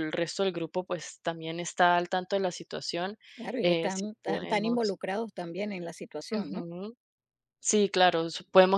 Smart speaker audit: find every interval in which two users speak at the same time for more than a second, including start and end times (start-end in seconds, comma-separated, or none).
3.6-5.0